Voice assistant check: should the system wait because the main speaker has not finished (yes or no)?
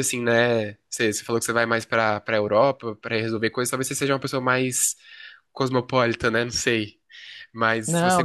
no